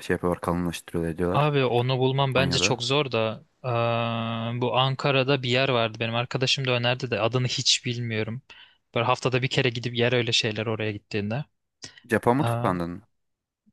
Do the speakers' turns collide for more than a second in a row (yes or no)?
no